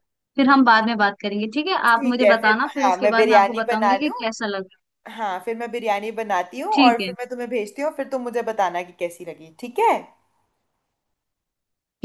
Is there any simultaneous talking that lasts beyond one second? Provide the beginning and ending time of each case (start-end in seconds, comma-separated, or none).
1.9-4.1